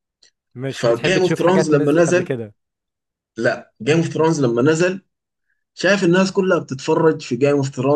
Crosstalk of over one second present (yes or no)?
yes